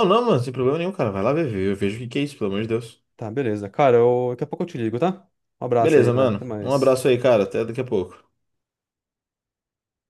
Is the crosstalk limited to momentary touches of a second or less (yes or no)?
no